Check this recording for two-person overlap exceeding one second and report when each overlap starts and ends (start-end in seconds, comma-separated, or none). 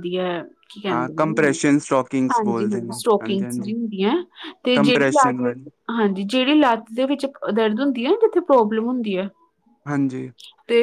2.3-3.7